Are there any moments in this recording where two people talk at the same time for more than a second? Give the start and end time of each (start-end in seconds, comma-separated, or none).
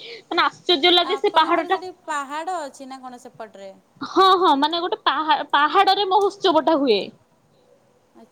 none